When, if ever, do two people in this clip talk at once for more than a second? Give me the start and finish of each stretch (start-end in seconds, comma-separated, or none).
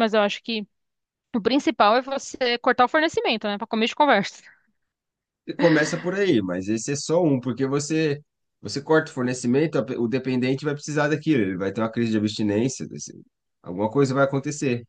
none